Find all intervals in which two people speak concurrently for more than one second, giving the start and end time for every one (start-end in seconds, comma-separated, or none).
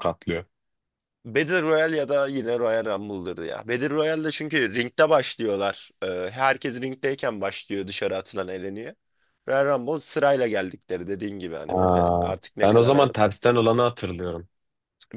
11.7-13.1